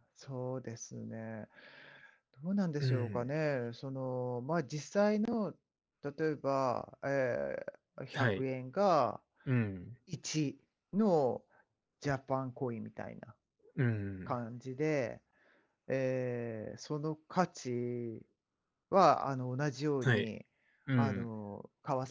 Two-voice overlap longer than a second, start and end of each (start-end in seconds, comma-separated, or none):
none